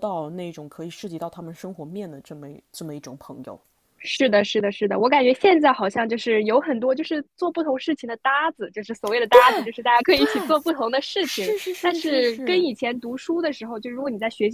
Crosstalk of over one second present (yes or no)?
yes